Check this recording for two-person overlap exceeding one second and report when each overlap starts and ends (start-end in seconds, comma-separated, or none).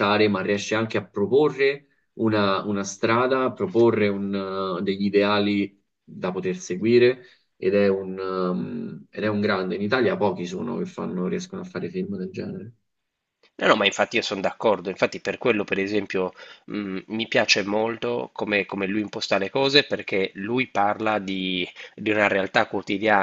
none